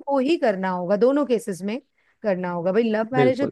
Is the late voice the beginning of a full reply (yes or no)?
no